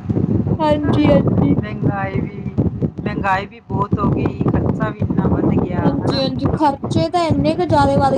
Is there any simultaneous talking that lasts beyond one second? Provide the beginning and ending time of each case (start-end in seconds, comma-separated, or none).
none